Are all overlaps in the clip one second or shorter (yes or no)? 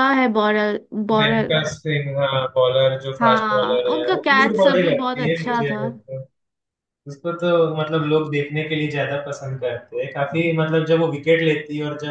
no